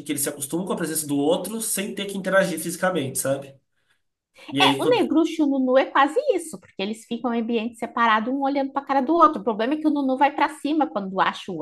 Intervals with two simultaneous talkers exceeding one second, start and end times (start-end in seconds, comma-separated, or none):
none